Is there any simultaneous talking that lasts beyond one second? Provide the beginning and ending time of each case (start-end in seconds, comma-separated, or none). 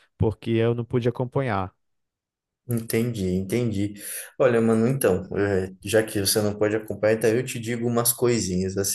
none